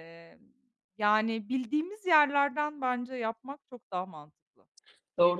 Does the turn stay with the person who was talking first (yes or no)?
no